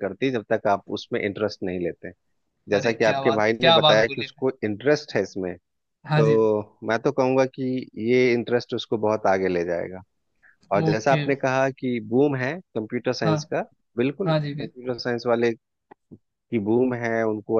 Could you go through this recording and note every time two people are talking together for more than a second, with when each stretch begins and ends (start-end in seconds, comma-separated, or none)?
2.8-4.4